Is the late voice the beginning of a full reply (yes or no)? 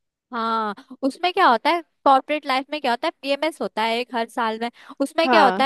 no